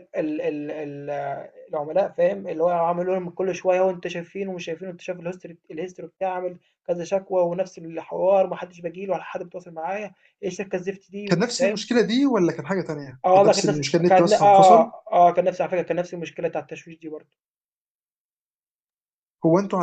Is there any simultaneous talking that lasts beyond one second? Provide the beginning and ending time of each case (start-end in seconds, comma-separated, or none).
13.2-14.9